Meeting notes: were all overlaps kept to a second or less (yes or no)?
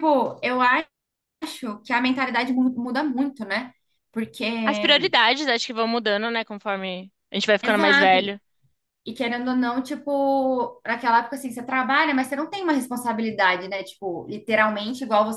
yes